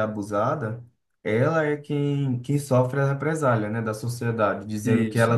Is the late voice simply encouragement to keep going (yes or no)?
yes